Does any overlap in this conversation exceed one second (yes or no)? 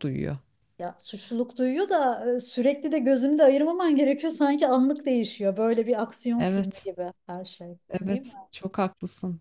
no